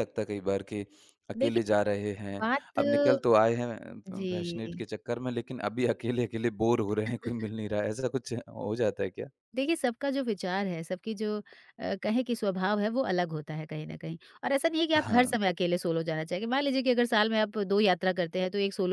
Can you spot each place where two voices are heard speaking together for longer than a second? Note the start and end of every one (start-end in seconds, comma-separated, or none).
none